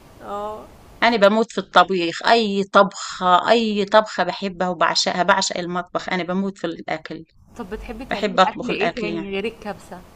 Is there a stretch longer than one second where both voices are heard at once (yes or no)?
yes